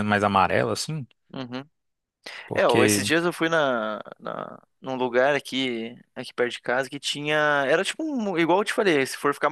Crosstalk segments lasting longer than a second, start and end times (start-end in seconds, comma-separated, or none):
none